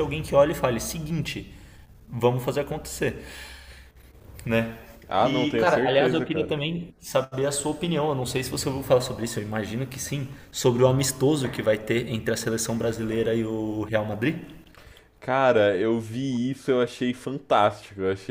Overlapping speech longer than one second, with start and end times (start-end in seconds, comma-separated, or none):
5.2-6.5